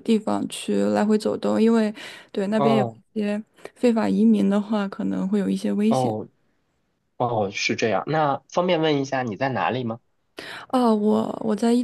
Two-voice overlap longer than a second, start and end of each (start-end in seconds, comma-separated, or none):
none